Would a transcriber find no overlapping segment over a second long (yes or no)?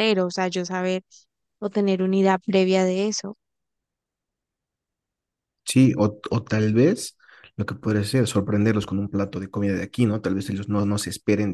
yes